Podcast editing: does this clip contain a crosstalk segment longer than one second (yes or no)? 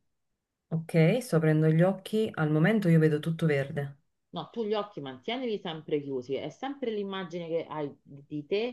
no